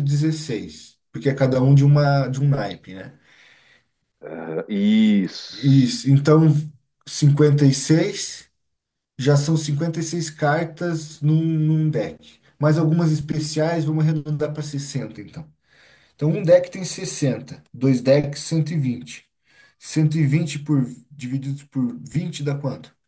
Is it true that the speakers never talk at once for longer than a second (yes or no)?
yes